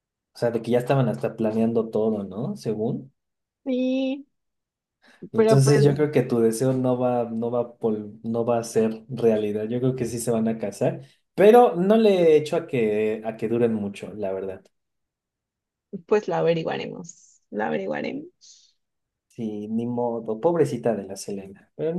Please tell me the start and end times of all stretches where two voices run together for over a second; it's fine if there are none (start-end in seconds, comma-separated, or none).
none